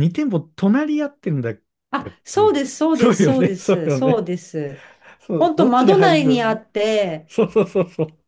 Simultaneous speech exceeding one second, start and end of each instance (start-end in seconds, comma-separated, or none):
2.0-4.3, 5.4-6.6